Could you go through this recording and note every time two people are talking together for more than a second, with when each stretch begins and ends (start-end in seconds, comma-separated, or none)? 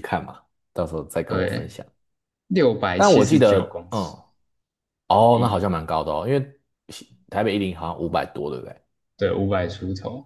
3.0-4.2